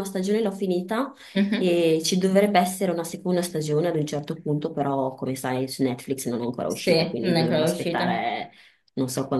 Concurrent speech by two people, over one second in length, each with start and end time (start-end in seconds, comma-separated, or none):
6.7-8.2